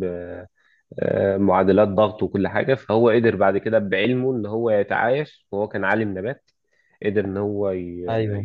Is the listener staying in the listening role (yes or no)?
yes